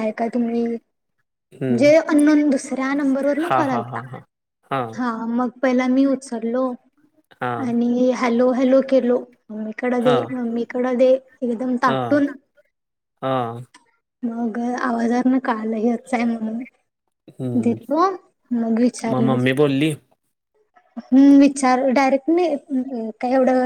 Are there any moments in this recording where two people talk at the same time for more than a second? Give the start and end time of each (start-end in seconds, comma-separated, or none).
none